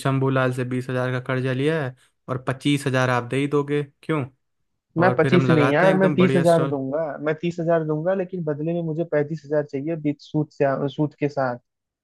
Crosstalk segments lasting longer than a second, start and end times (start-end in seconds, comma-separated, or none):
5.0-6.8